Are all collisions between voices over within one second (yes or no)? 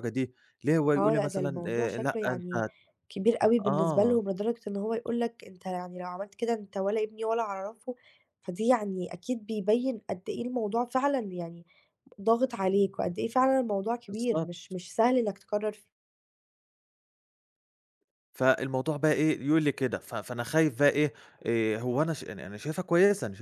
no